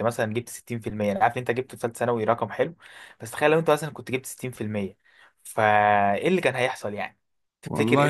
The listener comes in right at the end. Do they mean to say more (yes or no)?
yes